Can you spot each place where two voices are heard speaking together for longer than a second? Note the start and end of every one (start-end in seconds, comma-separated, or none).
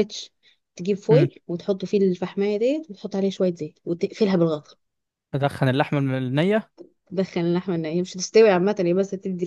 none